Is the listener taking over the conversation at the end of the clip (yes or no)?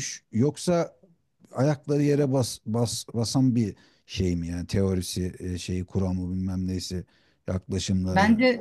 yes